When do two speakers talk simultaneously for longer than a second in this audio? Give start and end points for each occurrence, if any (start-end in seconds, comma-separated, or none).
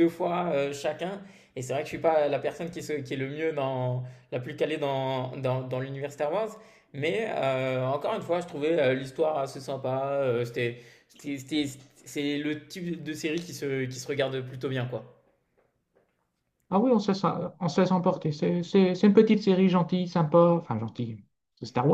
none